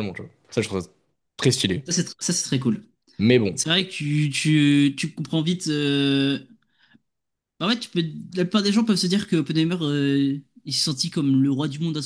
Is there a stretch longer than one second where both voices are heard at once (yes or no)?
no